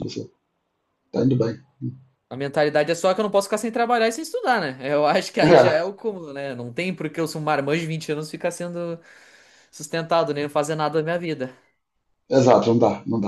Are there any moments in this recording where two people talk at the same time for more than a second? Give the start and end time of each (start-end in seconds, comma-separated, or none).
none